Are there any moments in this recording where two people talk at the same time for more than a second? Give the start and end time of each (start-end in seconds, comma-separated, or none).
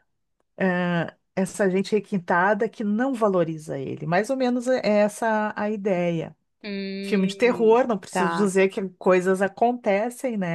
7.0-8.5